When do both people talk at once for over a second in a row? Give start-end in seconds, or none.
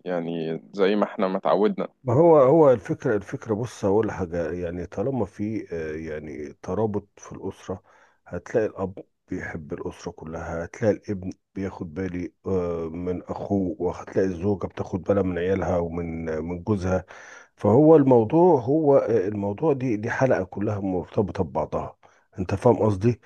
none